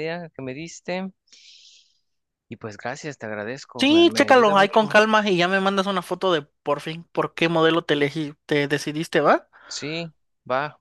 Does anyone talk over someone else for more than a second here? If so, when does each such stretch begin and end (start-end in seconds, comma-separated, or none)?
3.8-5.0